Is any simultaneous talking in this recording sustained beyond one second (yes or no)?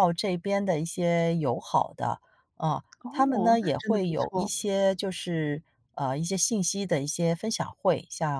yes